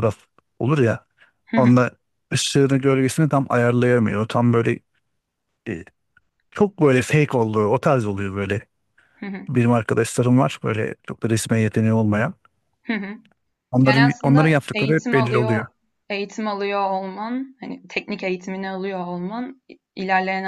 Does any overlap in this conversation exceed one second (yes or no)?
yes